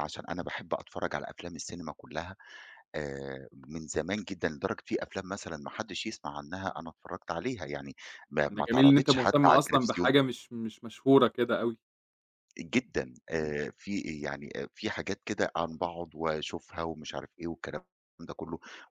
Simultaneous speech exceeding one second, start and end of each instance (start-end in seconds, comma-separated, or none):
8.5-10.1